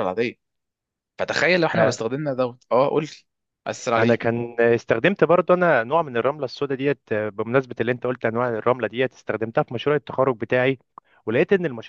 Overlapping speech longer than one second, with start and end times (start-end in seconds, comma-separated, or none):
none